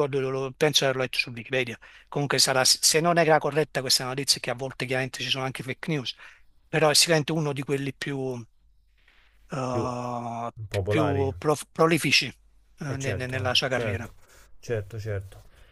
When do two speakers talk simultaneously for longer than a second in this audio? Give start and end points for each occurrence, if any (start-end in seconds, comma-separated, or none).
12.8-14.1